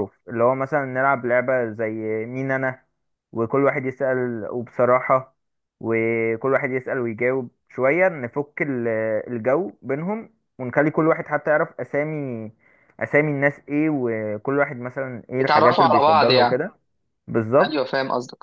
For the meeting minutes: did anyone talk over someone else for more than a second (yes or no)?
yes